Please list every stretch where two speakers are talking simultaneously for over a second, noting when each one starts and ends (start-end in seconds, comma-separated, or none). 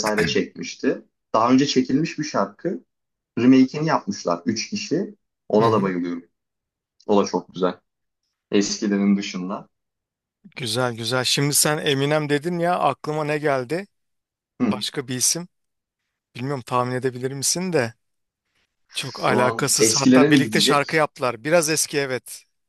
18.9-21.1